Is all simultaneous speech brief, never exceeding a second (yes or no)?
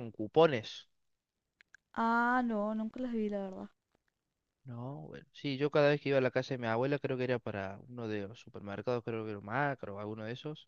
yes